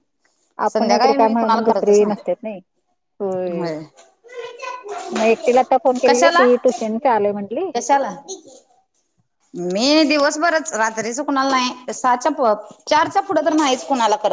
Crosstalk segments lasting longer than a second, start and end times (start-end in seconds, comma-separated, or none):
0.7-2.0